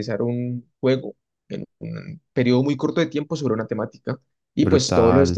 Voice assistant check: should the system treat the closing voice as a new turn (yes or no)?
no